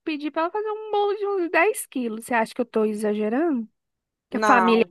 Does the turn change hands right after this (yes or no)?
yes